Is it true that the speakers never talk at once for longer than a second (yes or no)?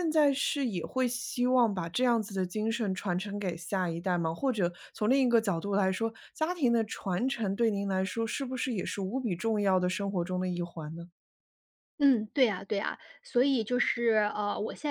yes